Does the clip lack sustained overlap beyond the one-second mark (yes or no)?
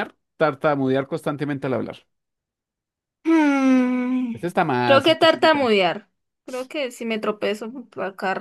no